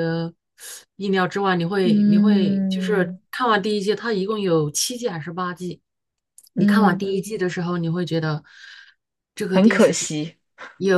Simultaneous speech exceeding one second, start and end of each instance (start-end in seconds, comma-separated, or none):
1.8-3.2